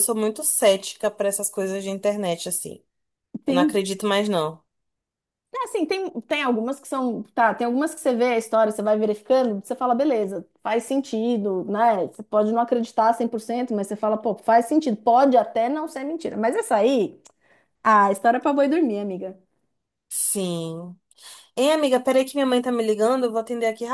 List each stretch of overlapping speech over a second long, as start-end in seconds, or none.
none